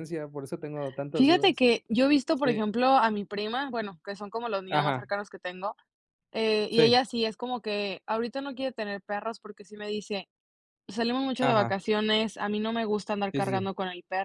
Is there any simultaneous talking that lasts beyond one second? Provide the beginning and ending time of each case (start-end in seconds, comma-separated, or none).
none